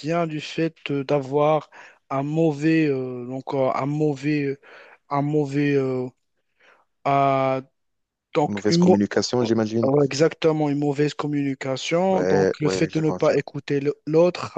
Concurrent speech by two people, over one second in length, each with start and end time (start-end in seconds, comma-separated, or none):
12.1-13.4